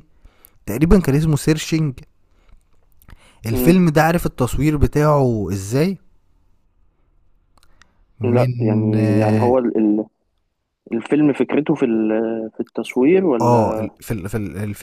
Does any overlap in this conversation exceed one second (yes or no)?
yes